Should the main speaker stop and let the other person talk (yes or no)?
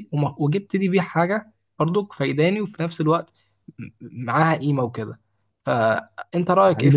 yes